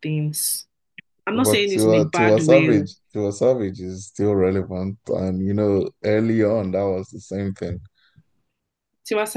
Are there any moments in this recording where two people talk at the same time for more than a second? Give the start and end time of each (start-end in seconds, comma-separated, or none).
1.3-2.8